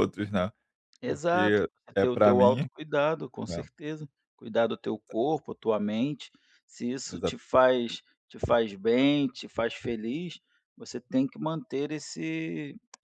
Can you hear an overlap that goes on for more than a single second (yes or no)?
yes